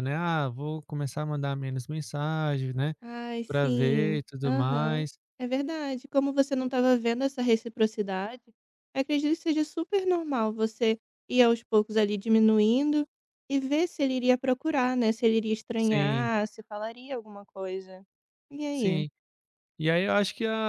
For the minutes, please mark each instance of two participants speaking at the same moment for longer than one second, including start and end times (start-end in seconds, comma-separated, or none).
3.5-5.2